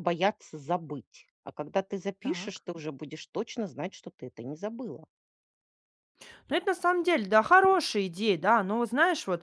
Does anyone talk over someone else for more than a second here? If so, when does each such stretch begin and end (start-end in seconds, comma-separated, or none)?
none